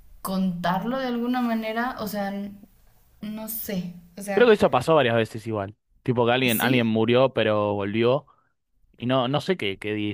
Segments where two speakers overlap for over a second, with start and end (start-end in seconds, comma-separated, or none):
none